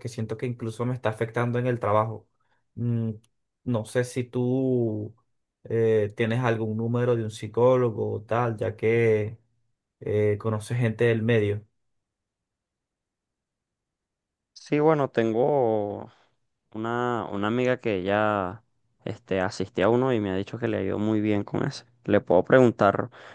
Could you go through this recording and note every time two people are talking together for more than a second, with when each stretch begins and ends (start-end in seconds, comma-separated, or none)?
none